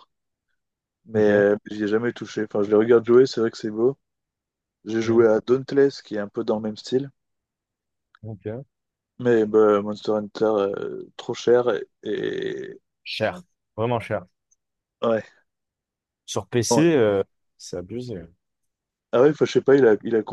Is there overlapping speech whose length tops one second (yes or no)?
no